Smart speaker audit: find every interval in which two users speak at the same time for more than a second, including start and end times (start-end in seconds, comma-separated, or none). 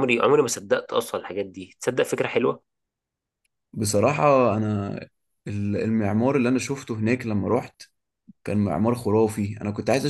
none